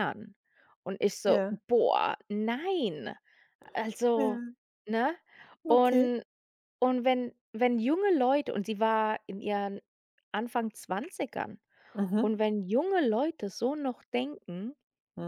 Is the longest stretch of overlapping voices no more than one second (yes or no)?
yes